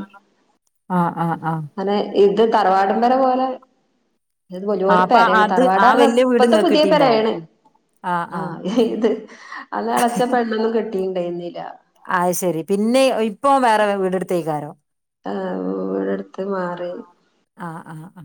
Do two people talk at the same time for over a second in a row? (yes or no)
yes